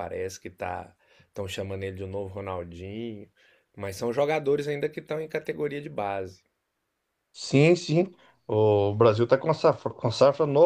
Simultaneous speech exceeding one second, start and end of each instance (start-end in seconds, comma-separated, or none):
none